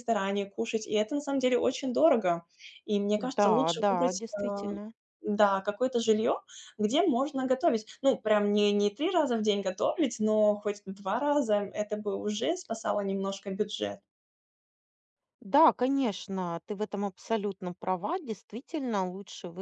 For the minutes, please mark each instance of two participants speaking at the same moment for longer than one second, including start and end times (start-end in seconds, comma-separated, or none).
3.2-4.8